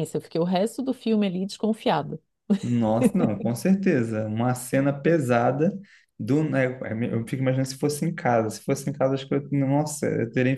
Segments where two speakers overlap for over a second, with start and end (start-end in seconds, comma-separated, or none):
none